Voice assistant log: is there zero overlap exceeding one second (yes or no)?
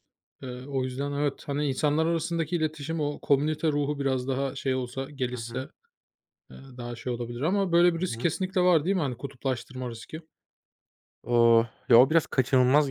yes